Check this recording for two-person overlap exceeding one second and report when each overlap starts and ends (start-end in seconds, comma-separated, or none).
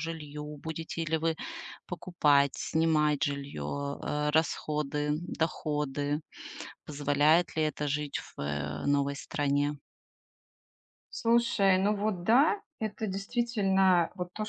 none